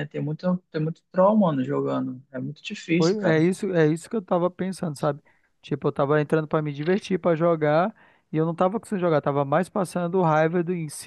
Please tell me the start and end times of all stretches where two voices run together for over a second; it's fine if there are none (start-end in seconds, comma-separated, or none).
none